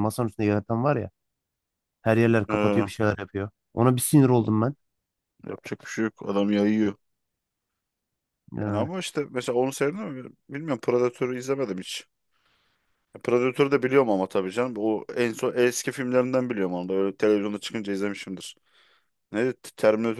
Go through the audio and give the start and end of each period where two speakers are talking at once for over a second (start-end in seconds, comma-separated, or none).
none